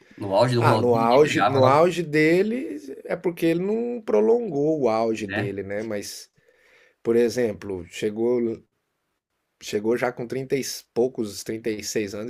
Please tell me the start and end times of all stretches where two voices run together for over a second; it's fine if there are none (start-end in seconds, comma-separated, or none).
0.6-1.9